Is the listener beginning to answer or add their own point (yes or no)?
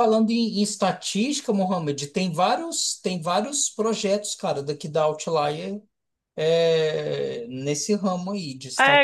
yes